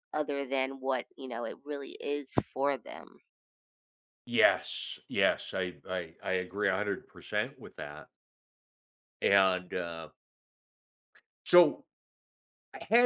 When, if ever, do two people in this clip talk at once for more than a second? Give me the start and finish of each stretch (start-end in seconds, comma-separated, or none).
none